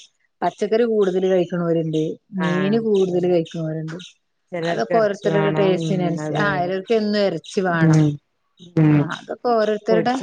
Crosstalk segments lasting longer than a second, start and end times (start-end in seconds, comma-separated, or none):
4.7-6.7